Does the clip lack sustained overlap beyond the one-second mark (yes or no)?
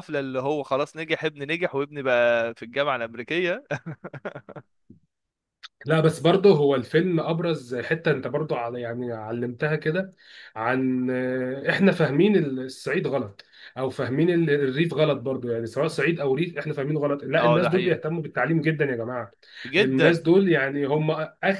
yes